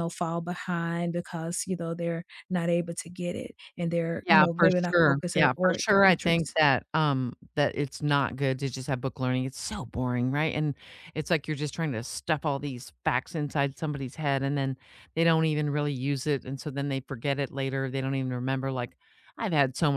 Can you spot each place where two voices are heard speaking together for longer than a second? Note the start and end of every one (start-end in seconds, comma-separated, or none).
4.2-6.6